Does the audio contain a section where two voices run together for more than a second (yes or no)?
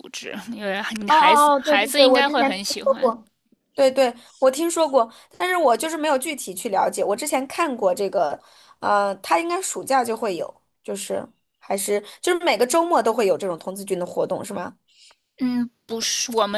yes